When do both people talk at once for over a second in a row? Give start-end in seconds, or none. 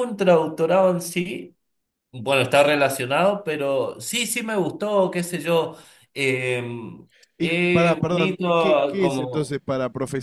7.4-9.5